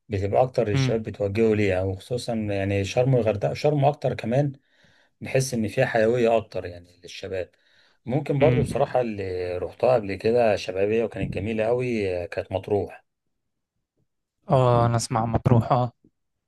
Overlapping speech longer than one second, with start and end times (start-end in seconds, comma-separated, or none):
none